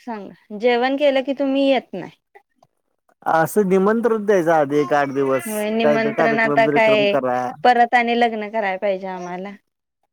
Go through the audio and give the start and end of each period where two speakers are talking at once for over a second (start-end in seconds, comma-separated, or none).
5.5-7.2